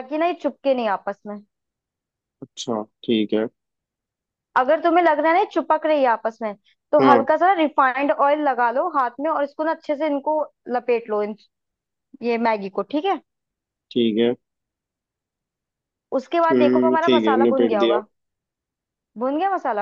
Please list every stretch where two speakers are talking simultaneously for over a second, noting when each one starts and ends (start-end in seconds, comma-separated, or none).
16.5-18.0